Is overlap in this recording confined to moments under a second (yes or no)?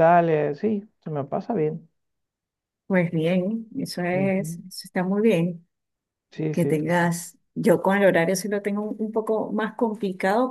yes